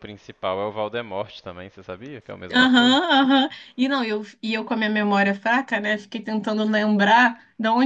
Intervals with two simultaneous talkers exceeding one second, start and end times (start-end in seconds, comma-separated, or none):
none